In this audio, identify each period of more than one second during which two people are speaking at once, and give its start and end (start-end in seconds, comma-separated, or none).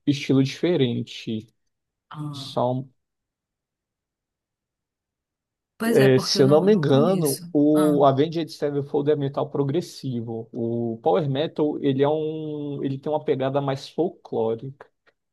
5.8-8.0